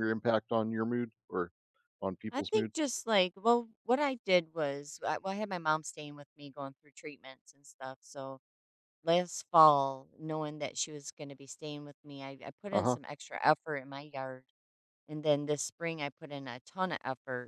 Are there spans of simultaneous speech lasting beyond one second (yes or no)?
no